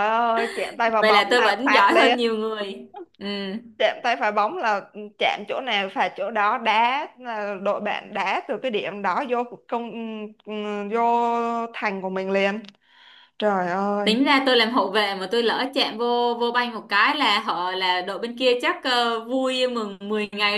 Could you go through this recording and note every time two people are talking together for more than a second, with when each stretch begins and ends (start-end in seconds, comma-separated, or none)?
1.0-2.2